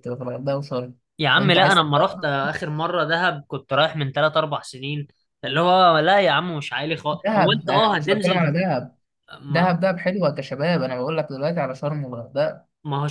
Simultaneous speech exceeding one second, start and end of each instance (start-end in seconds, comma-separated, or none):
7.1-8.7